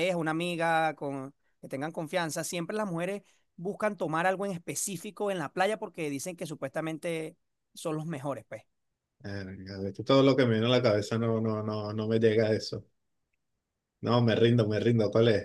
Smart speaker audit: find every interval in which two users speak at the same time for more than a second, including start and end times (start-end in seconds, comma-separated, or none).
none